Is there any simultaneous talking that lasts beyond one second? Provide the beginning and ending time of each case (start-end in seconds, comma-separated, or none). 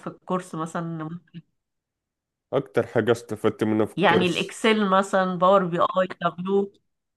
none